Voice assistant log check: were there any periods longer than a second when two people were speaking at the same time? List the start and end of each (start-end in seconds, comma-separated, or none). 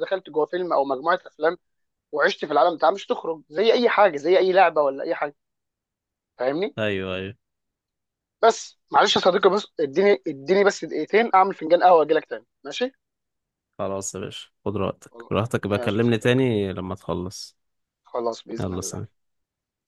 15.1-16.4